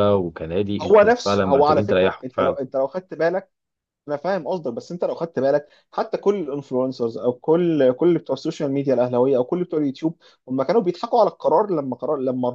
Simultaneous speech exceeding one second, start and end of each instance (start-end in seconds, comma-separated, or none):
0.8-2.6